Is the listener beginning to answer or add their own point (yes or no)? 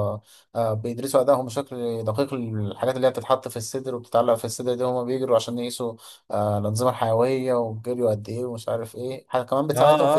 yes